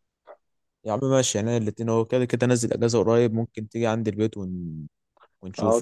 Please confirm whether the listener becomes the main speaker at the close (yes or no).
yes